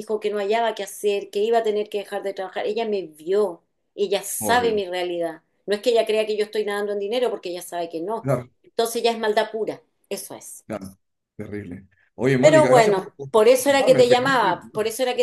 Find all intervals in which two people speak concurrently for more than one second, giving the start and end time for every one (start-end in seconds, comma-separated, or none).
12.4-14.5